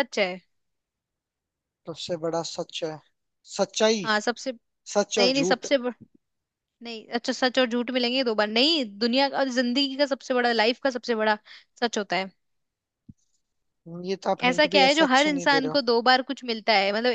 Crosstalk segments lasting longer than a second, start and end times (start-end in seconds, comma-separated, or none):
14.5-15.8